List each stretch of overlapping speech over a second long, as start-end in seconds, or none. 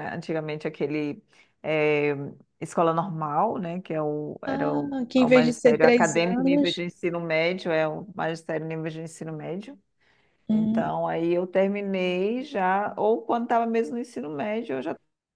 4.5-6.8